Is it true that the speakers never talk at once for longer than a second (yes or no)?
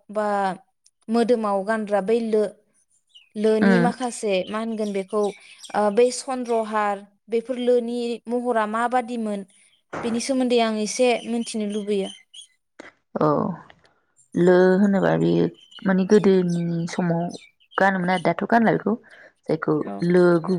yes